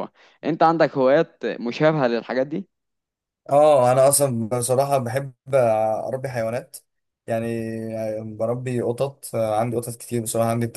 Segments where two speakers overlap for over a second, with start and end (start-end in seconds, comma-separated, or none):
none